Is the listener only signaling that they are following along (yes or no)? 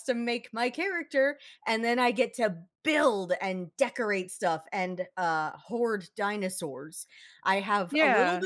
yes